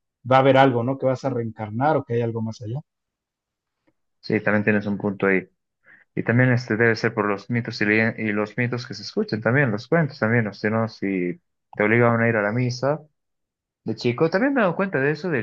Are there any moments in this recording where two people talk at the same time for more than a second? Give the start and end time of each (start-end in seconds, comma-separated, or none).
none